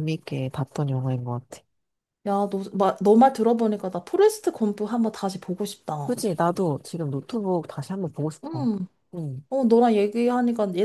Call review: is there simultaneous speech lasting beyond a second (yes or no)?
no